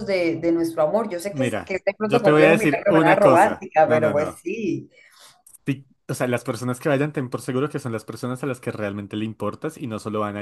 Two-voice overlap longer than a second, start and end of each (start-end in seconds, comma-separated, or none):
1.3-4.4